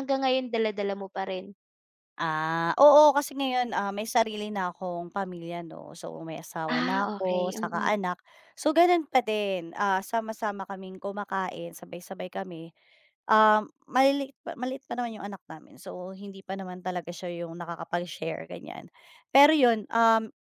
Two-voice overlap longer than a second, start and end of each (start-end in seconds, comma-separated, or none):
6.7-8.0